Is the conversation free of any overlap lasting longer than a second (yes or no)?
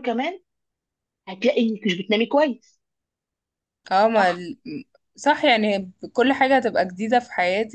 yes